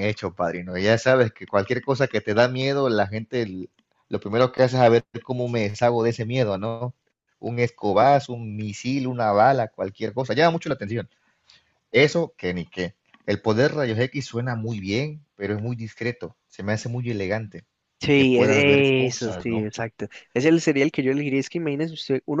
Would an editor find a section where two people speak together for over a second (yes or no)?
yes